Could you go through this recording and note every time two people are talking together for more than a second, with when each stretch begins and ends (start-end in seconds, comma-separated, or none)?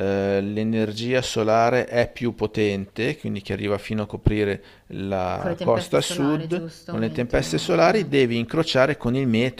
5.4-8.1